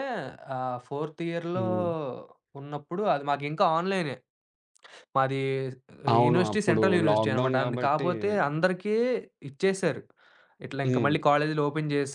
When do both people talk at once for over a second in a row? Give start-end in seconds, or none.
6.2-8.1